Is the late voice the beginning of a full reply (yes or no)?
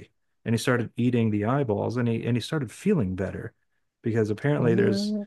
no